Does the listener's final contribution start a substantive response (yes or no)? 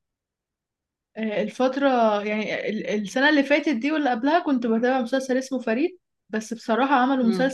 no